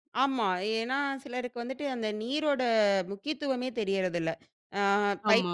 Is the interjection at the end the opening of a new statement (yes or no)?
no